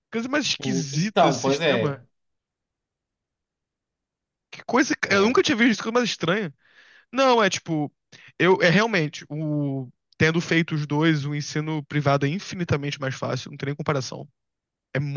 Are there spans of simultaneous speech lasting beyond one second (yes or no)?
yes